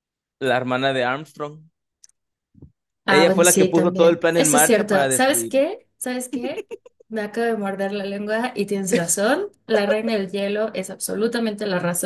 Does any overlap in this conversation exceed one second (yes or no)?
yes